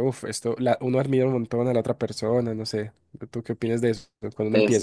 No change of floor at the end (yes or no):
no